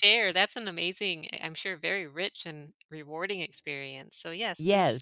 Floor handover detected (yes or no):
yes